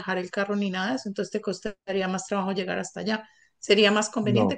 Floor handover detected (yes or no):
no